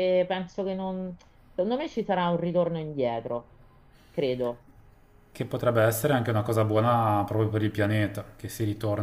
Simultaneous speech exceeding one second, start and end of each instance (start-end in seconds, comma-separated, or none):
none